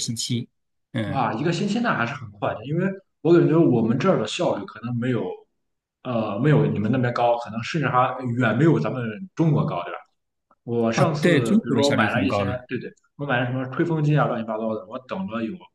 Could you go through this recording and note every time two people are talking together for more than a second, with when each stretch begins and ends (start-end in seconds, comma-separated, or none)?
10.9-12.5